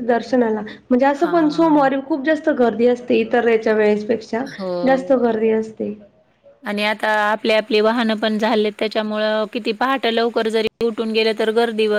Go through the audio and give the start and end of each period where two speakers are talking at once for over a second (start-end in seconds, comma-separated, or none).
none